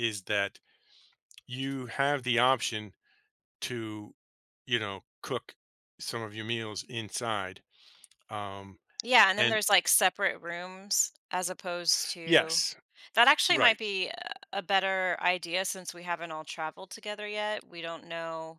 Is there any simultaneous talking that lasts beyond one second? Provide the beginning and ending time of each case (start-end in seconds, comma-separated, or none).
none